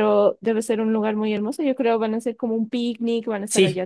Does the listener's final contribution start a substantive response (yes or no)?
yes